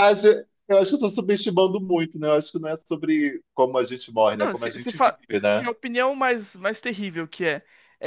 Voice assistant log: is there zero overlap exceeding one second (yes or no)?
no